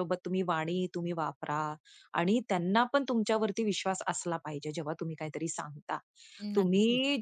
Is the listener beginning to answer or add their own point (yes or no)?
no